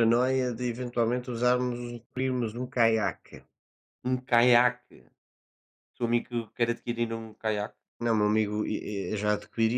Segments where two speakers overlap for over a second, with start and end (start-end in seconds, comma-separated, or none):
none